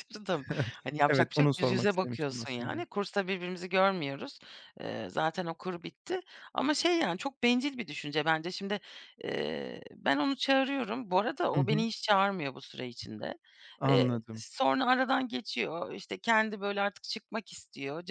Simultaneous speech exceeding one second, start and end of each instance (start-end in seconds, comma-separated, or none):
1.1-2.9